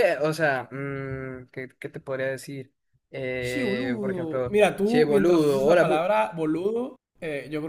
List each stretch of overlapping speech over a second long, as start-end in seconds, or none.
3.4-6.0